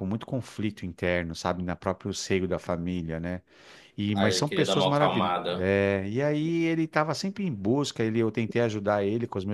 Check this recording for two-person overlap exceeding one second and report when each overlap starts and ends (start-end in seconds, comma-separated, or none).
4.1-5.7